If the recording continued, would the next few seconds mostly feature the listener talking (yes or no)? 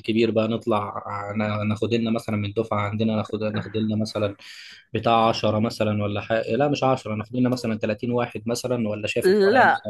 yes